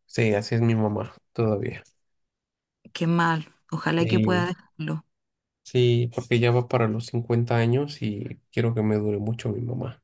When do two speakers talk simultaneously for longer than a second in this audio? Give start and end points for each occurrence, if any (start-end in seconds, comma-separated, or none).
none